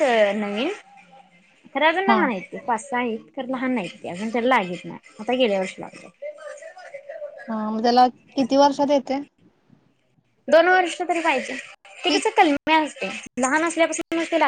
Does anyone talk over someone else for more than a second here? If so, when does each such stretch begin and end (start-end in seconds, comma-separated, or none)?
none